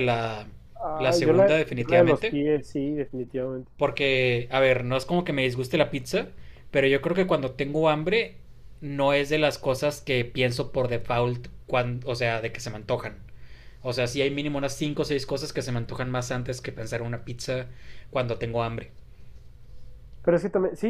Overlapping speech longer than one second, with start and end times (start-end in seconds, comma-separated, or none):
0.9-2.4